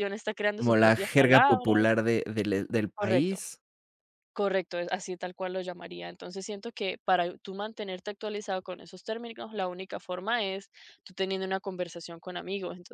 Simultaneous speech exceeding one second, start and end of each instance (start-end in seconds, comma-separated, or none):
0.6-1.9